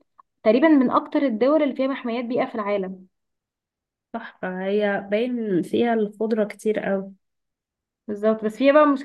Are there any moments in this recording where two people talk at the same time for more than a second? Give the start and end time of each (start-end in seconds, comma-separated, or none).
none